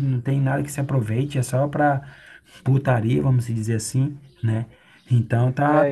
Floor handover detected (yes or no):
yes